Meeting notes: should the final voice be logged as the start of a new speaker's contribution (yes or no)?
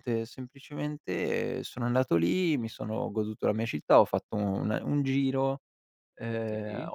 no